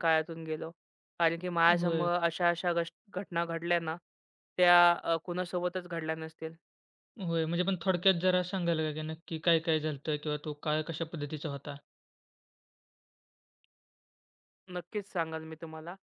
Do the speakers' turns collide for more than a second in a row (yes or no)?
no